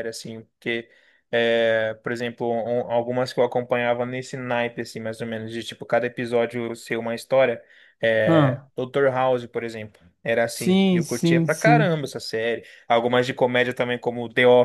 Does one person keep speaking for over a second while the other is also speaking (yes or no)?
yes